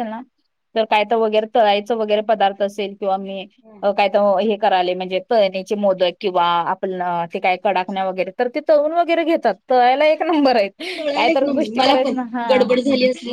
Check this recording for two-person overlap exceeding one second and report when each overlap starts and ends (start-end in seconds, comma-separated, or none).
none